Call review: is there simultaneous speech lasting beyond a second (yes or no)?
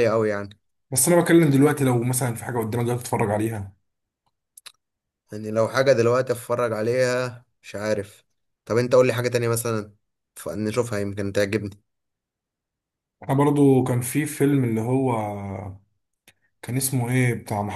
no